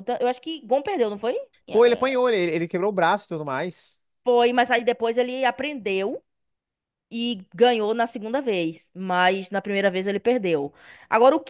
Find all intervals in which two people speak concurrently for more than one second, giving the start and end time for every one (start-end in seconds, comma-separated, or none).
none